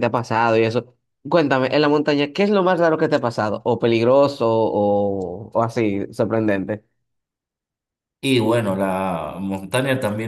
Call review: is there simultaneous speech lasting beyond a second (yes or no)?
no